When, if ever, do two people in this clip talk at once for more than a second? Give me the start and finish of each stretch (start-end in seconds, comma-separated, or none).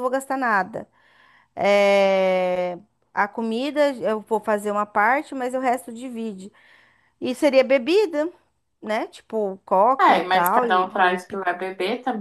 10.0-11.4